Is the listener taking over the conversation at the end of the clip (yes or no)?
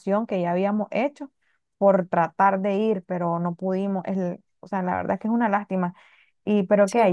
no